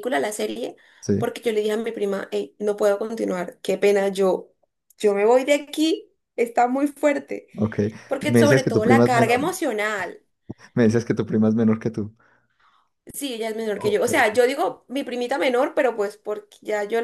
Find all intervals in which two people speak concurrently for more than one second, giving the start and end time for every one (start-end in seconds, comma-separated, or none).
8.2-9.4